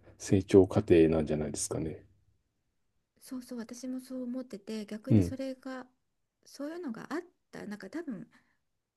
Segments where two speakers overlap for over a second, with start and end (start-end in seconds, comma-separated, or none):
none